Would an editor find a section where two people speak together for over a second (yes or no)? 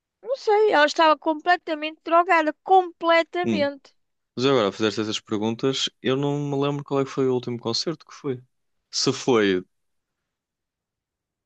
no